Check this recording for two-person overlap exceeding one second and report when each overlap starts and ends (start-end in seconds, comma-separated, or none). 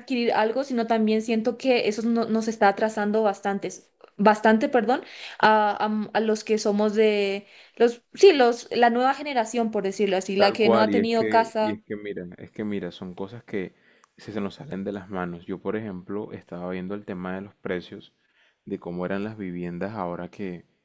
10.3-11.8